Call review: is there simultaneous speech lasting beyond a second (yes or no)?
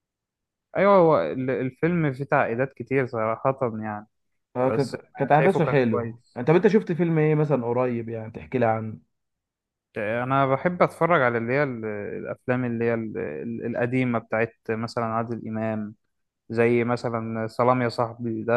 yes